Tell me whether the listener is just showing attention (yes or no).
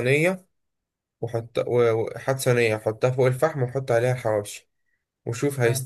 yes